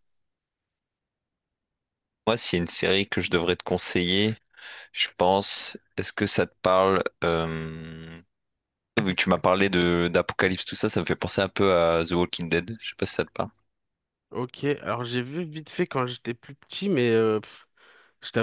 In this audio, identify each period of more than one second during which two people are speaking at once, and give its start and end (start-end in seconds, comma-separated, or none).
none